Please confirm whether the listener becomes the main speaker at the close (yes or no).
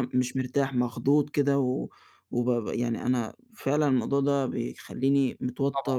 no